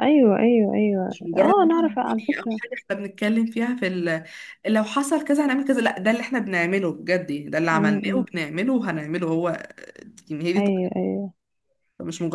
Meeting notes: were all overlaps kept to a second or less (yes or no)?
no